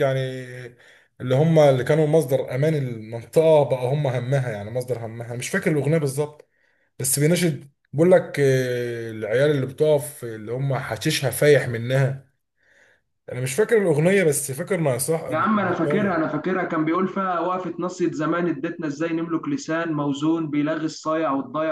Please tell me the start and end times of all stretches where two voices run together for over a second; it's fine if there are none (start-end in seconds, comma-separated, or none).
none